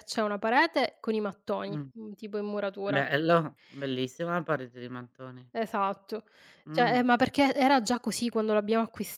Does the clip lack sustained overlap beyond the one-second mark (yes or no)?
yes